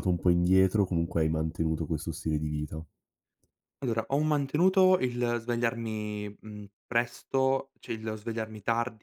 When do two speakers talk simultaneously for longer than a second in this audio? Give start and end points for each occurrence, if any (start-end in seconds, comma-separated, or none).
none